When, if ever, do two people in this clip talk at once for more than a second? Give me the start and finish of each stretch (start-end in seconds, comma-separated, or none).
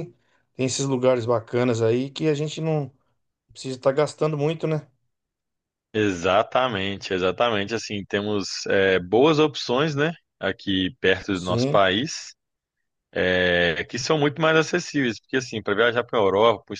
none